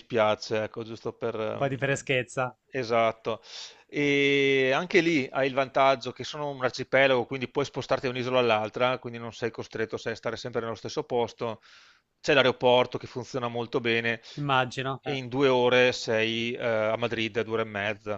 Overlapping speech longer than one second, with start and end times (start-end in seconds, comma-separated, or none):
none